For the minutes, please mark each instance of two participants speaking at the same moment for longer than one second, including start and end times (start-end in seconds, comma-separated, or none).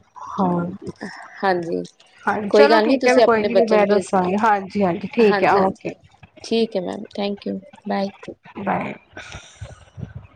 2.5-4.3